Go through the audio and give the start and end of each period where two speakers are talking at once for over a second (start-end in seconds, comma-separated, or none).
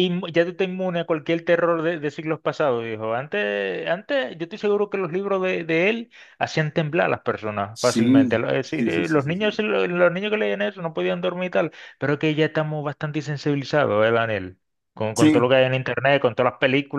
7.7-9.5